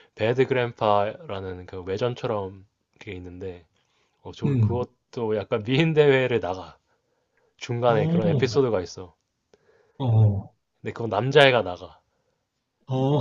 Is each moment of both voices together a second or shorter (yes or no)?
yes